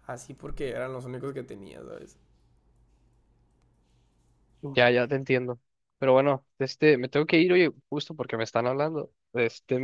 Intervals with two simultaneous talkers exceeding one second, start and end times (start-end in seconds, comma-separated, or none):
none